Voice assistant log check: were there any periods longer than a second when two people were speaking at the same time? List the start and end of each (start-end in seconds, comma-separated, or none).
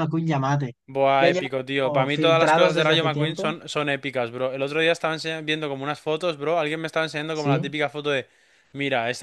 1.2-3.5